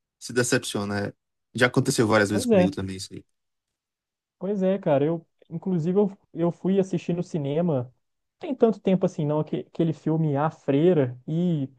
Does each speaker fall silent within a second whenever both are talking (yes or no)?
yes